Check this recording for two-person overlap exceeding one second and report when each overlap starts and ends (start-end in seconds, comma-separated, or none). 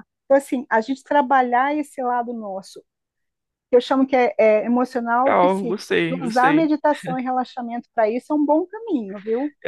5.2-6.7